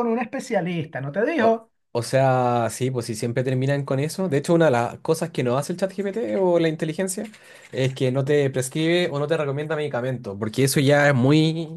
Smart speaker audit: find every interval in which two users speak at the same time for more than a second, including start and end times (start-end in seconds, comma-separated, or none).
none